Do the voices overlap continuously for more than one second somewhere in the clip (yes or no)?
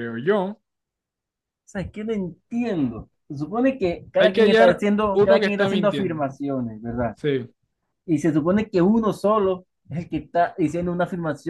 yes